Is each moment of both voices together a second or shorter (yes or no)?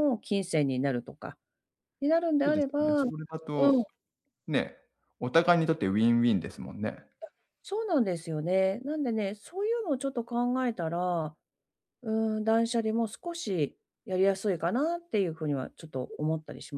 no